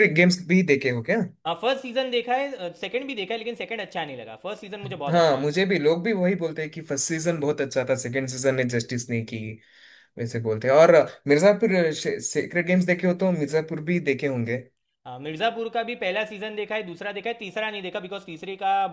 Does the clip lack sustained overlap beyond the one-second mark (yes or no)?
yes